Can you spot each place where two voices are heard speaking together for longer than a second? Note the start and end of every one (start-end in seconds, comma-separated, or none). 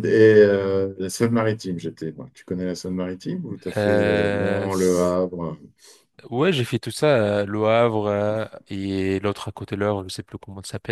3.8-5.2